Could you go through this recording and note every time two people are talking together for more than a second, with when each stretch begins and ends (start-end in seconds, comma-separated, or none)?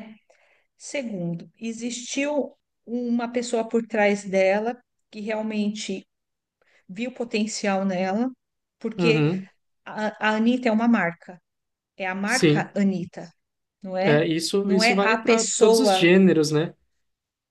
14.0-16.1